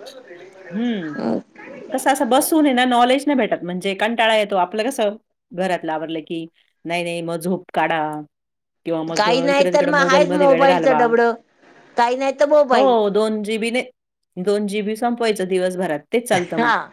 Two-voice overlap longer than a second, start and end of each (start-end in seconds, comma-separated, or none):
9.2-11.0